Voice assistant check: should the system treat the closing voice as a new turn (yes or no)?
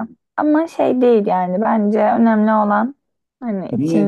yes